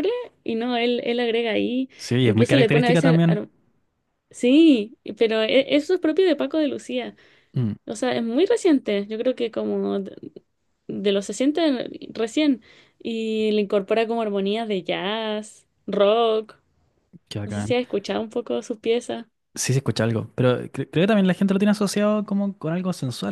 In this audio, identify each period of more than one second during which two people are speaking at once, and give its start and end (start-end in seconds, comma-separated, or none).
2.0-3.5